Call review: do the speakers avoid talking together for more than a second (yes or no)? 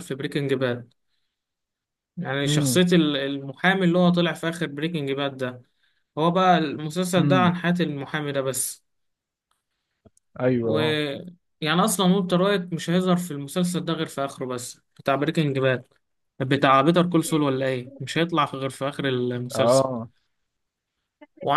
yes